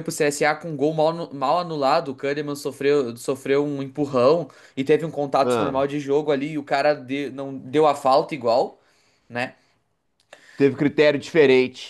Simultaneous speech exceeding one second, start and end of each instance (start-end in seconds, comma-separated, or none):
none